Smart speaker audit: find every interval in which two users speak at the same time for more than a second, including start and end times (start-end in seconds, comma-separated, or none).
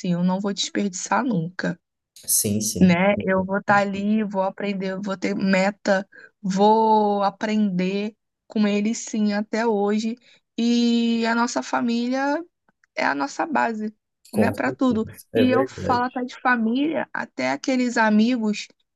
14.3-16.2